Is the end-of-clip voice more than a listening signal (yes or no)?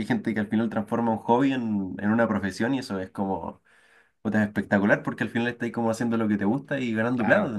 yes